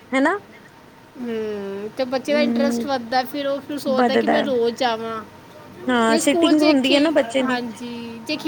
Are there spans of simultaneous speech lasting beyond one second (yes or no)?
yes